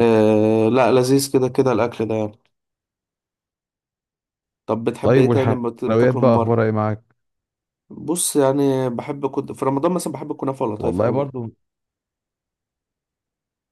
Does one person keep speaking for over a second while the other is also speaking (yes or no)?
yes